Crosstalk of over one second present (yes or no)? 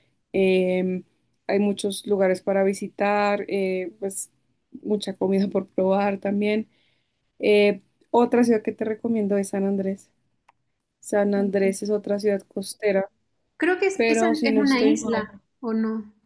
yes